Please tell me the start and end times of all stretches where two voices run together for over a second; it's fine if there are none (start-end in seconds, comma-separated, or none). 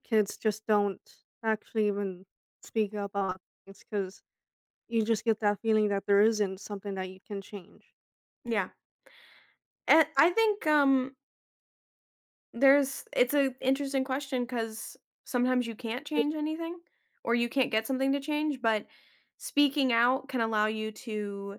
none